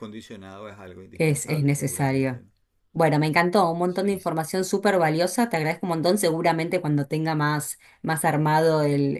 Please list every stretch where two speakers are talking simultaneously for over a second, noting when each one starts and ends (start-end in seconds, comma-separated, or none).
1.1-2.4